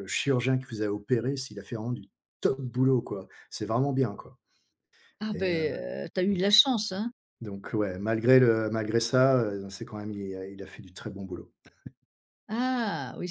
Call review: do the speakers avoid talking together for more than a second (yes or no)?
yes